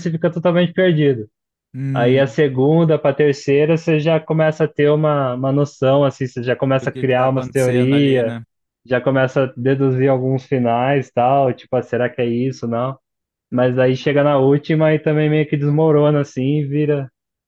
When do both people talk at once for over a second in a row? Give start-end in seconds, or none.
6.7-8.3